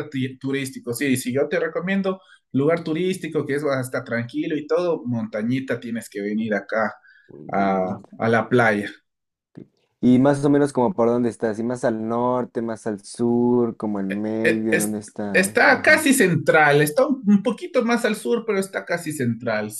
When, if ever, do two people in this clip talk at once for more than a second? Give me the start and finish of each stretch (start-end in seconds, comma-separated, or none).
14.4-16.1